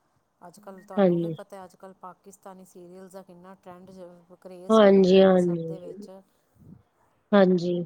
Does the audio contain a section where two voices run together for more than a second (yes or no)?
yes